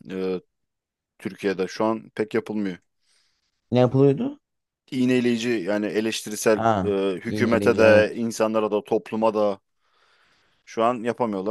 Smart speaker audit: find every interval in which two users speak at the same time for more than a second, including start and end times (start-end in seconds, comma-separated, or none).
6.5-8.1